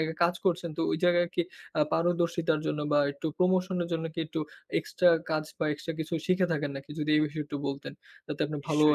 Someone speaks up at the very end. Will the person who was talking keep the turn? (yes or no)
no